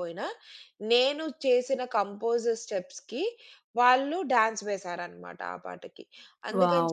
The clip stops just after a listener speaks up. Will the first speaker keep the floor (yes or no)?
no